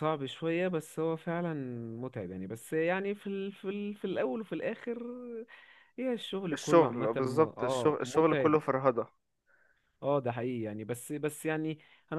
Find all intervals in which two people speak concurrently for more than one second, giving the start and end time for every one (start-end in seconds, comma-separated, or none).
6.5-8.6